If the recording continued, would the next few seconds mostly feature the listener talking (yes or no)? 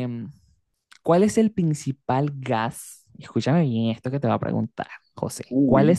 no